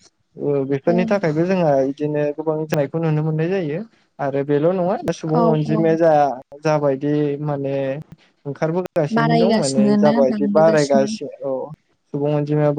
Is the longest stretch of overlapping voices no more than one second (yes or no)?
no